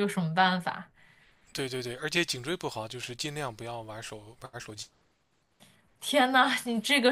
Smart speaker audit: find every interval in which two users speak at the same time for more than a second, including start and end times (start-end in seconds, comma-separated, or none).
none